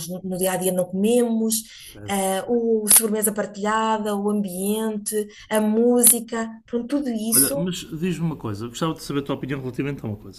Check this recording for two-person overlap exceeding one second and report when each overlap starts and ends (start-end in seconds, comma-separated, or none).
none